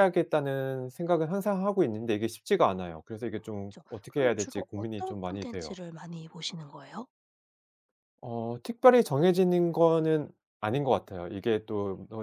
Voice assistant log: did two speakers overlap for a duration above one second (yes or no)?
yes